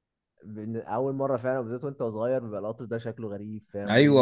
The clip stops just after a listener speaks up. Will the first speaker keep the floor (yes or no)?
no